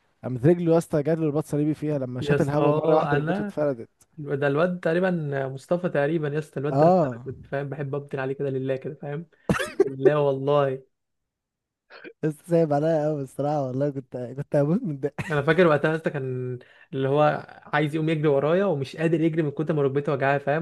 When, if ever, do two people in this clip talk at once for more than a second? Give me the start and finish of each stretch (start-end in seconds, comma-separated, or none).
2.2-3.6